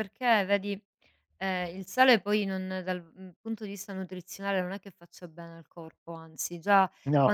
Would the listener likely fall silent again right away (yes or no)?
yes